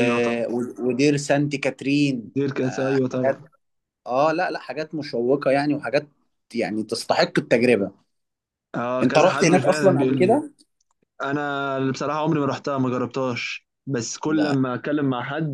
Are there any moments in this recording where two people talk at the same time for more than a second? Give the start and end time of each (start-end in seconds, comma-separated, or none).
9.0-10.4